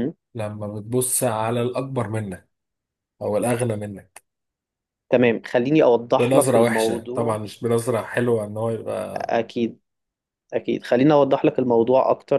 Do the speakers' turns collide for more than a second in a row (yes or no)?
yes